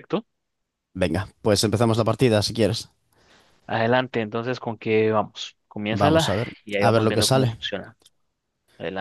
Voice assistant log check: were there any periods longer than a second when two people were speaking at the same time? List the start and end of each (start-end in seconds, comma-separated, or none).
5.9-7.6